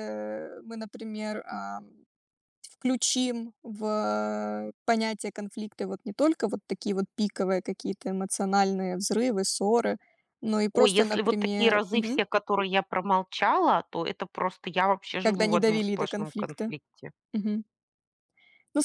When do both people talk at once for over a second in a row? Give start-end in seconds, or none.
10.7-12.2, 15.2-16.7